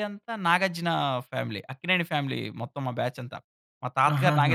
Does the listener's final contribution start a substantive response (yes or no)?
yes